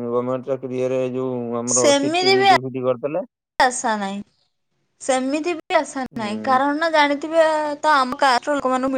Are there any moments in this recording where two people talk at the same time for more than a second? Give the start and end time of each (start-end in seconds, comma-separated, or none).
none